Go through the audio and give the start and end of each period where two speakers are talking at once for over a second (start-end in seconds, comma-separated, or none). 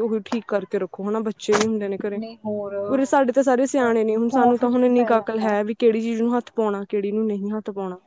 3.8-5.5